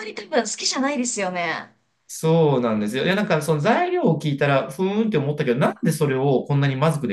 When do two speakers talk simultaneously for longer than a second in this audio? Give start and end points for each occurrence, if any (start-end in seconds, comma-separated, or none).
none